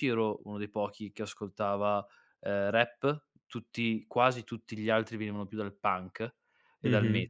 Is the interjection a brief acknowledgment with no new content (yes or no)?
no